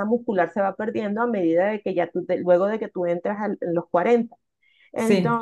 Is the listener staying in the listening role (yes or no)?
yes